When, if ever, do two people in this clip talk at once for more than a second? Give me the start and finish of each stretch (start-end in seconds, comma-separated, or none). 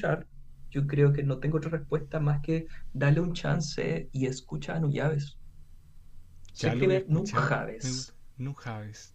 6.6-8.2